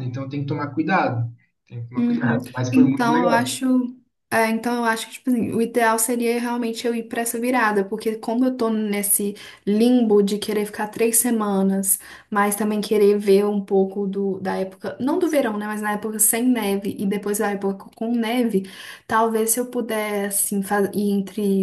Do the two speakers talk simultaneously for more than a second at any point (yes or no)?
yes